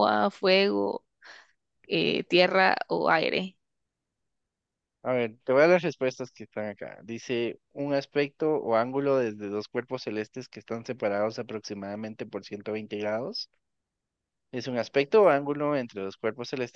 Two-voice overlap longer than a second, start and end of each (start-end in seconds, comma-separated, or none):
none